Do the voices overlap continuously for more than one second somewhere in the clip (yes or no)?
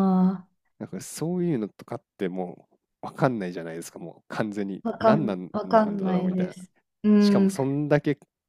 yes